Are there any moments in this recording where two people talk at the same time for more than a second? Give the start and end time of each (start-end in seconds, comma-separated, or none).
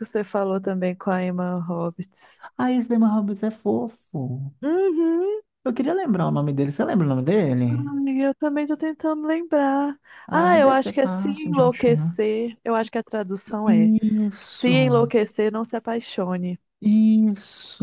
10.3-12.2